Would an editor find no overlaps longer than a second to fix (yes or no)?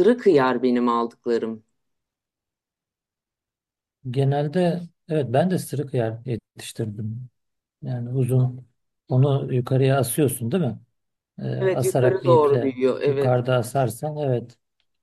no